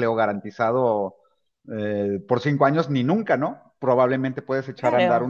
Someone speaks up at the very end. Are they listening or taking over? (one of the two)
listening